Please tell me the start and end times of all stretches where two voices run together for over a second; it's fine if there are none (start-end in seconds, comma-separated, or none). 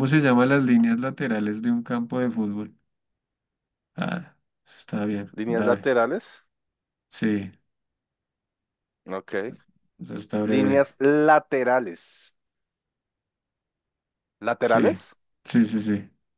none